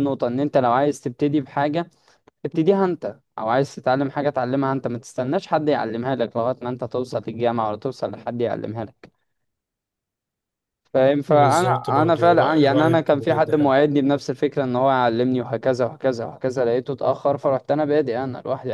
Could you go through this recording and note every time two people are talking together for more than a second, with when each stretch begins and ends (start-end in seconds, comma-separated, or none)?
11.3-13.7